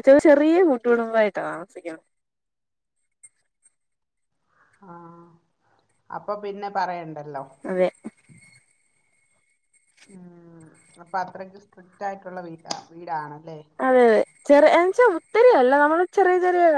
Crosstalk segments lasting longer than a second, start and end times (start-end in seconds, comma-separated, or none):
none